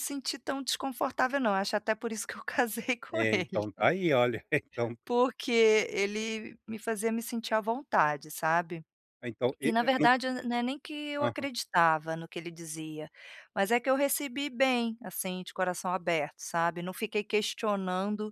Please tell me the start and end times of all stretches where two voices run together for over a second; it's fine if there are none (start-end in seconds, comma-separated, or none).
none